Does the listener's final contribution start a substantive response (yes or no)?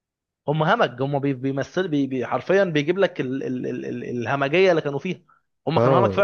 yes